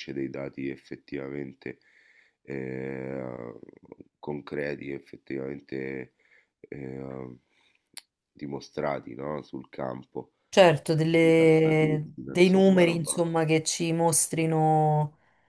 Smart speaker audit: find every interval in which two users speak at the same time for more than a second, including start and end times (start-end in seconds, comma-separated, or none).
11.2-13.2